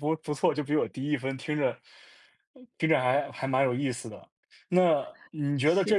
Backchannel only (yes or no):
yes